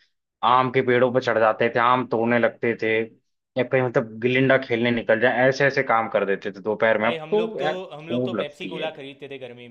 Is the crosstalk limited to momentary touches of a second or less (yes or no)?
no